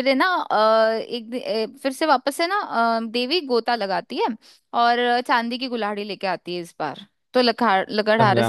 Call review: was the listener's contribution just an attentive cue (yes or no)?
yes